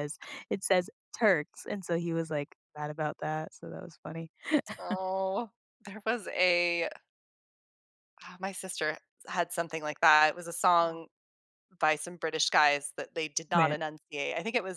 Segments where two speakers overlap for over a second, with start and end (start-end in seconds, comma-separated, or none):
none